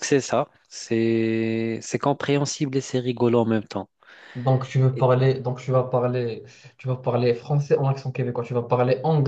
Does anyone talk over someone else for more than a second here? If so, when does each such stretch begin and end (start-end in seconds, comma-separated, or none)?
none